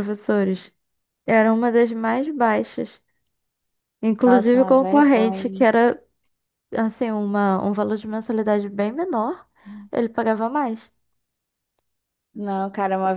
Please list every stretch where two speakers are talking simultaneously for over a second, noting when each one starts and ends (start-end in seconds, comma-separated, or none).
4.2-5.7